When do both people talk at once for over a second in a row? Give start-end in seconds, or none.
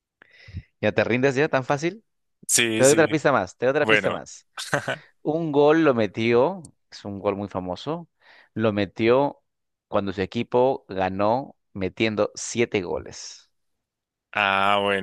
none